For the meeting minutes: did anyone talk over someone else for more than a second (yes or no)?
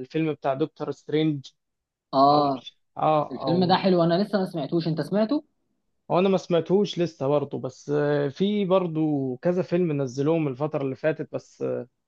no